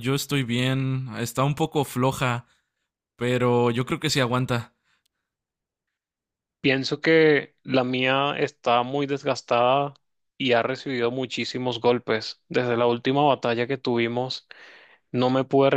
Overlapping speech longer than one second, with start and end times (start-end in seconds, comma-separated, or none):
none